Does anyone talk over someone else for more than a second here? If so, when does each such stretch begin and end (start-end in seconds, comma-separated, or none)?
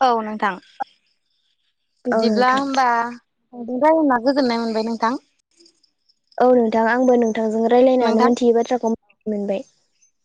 none